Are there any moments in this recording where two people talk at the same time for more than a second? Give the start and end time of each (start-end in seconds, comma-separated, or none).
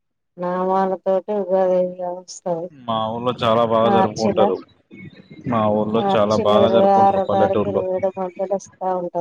6.0-7.8